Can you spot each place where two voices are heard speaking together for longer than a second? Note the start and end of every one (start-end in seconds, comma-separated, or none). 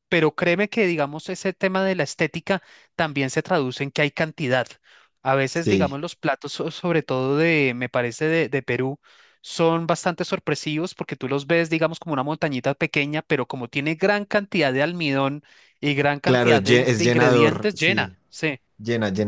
16.2-18.1